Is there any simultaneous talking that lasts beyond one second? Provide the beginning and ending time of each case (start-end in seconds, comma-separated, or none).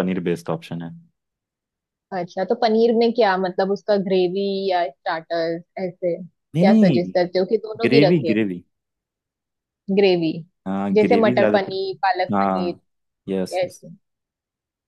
10.9-12.8